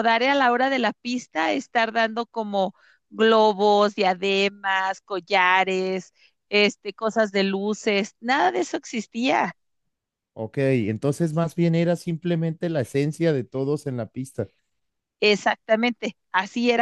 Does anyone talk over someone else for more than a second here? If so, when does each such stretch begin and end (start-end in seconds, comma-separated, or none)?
none